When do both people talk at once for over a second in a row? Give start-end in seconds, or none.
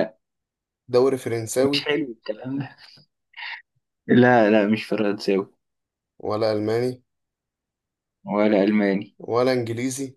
none